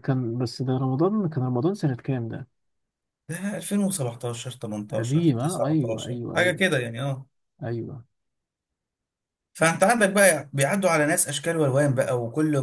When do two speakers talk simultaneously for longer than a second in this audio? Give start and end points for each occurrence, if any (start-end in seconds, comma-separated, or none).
4.9-6.6